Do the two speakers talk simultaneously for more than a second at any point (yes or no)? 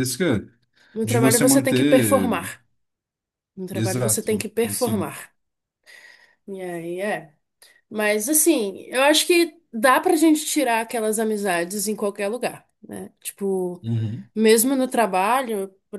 yes